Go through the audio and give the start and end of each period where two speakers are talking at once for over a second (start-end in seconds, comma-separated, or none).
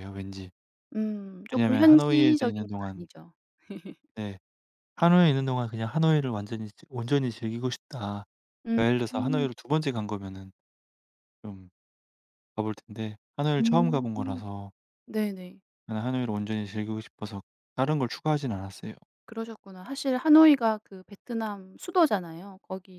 1.5-3.1